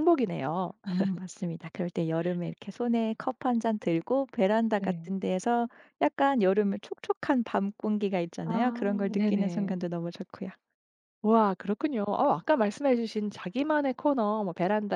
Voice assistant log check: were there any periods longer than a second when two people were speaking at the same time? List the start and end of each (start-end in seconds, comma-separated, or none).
8.4-9.8